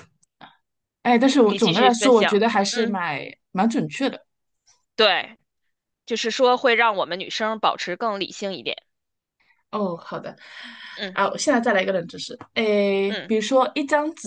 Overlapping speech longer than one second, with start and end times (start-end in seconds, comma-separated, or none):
1.4-3.0